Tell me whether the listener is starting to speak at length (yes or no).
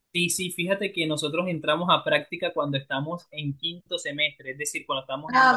yes